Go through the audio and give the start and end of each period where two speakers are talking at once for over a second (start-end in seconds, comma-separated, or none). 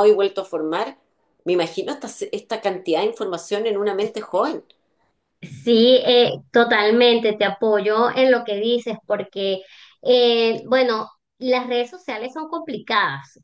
none